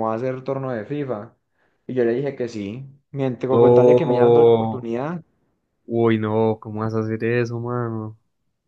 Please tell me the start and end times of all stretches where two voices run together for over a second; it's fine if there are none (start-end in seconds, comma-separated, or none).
3.5-4.9